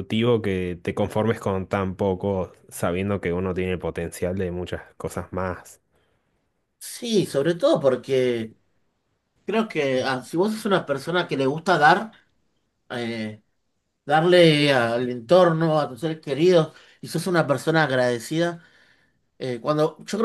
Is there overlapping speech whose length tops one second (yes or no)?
no